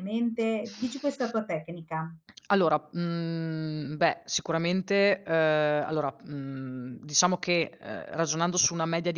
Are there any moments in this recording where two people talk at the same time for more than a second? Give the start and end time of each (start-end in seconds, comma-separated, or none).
none